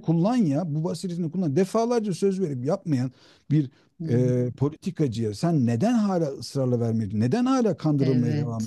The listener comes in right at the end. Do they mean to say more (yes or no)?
yes